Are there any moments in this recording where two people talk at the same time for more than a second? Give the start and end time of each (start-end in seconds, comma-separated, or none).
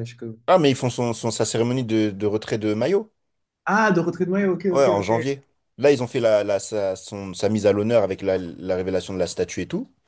none